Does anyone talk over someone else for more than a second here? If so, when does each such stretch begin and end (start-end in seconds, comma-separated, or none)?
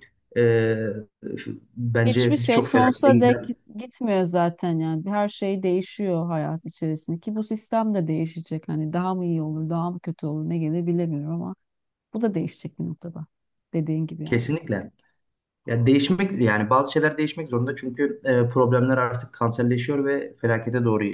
2.0-3.4